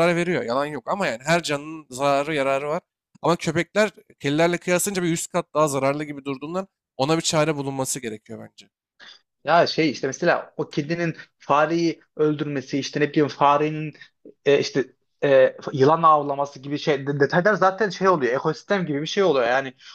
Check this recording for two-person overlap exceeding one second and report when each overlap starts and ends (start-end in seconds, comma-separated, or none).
none